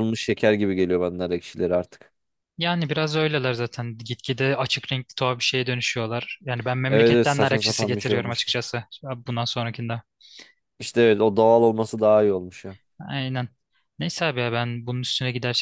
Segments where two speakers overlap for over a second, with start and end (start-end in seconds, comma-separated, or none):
6.9-8.5